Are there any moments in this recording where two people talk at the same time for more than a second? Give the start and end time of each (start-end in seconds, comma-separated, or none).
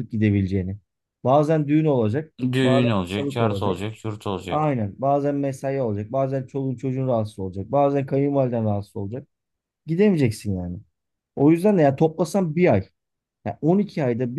2.5-3.8